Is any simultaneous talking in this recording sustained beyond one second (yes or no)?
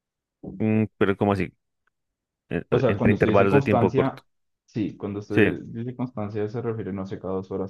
yes